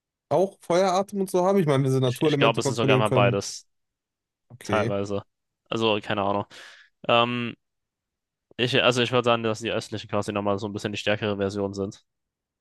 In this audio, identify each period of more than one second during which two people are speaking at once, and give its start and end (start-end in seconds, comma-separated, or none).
2.0-3.4